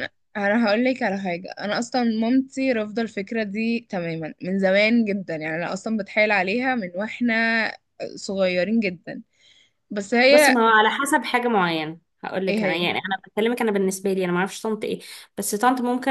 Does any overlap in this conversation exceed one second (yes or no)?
no